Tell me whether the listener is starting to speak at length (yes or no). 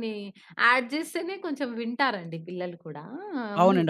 yes